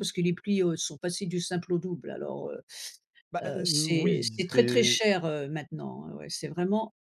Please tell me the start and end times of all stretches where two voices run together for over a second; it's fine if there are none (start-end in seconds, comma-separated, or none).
3.4-5.0